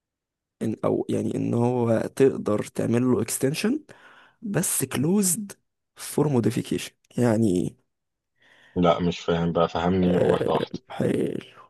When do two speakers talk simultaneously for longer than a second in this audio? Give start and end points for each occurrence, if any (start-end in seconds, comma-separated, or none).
none